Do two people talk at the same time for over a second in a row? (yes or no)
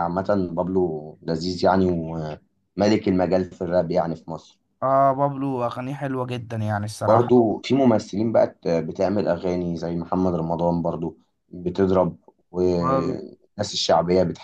no